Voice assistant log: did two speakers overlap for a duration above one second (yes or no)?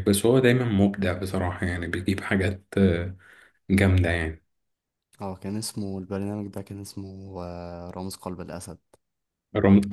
no